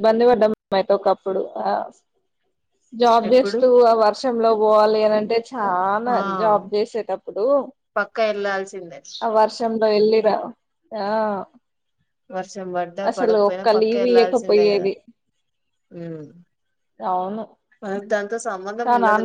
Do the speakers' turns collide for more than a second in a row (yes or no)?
yes